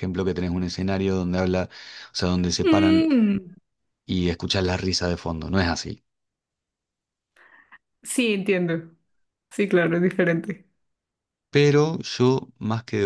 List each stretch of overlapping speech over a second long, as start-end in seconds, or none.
none